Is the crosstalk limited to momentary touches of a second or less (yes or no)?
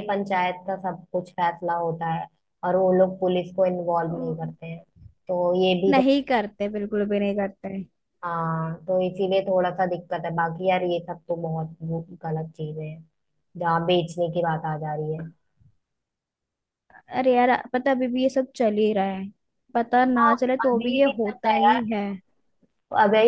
no